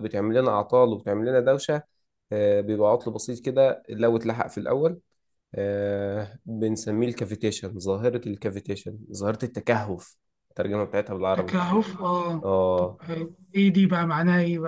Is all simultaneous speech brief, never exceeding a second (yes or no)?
yes